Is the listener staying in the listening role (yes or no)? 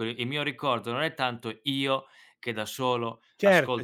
yes